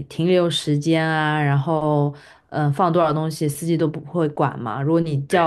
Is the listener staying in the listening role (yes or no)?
yes